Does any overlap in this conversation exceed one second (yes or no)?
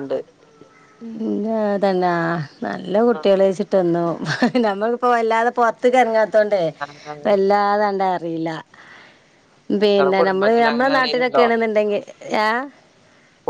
yes